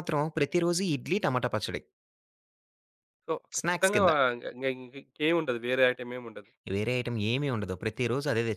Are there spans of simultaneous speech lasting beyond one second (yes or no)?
no